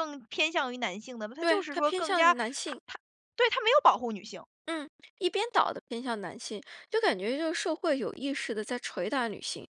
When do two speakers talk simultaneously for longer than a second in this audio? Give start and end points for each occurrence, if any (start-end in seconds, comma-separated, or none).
1.4-2.8